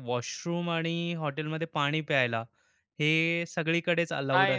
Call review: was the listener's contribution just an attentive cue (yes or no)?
no